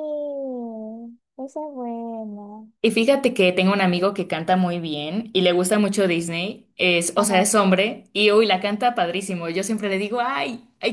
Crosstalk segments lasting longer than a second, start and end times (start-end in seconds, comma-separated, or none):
none